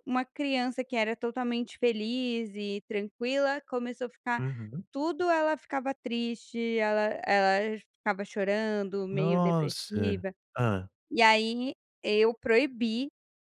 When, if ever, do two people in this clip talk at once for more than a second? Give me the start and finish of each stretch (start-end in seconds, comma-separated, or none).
9.1-10.3